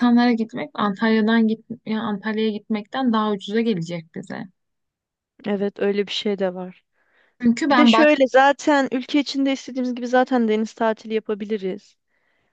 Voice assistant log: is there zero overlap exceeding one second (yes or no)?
yes